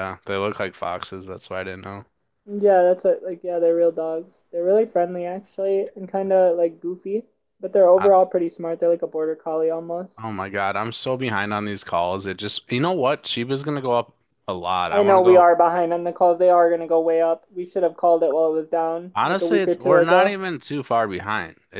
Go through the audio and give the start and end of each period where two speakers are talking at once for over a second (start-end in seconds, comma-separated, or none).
19.1-20.4